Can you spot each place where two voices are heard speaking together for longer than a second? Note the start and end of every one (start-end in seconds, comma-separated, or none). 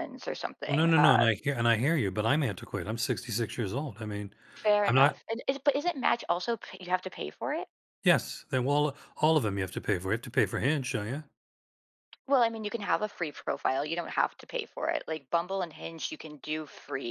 none